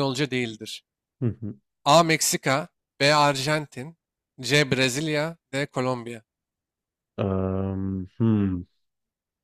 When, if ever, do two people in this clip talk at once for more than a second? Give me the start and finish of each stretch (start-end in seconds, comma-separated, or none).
none